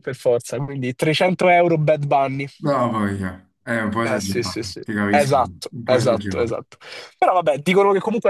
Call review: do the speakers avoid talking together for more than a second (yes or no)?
no